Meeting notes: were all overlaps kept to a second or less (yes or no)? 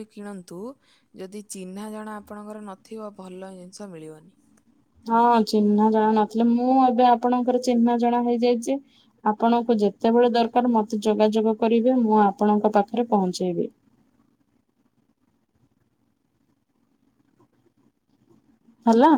yes